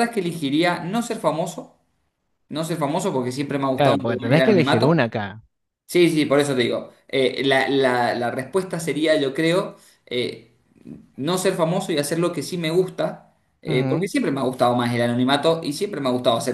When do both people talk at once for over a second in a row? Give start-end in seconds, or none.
3.8-5.0